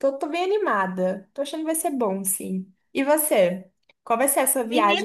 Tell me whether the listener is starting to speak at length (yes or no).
yes